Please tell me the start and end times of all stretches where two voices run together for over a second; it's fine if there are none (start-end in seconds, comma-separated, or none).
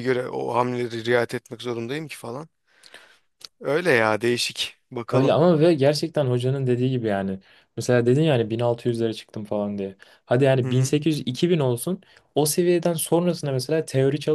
none